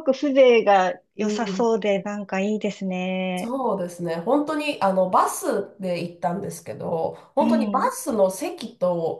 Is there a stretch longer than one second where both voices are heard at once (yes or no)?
no